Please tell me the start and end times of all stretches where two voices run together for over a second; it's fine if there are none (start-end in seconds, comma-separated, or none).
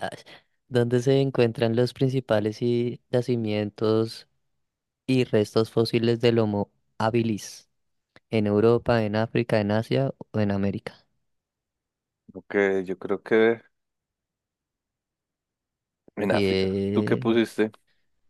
16.2-17.4